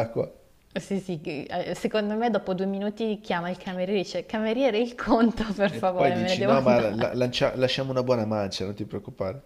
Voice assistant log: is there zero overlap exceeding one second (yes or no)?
no